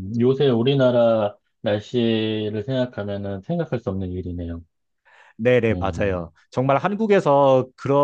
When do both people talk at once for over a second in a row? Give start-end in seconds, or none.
none